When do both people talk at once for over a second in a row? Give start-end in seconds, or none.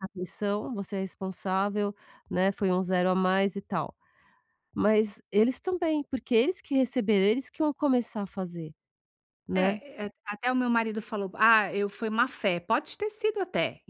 none